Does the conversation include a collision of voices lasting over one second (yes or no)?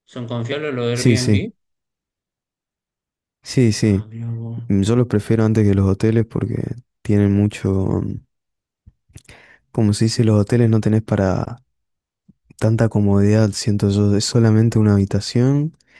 no